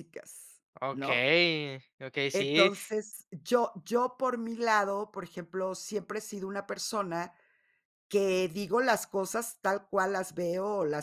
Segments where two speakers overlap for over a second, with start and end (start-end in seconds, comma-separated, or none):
none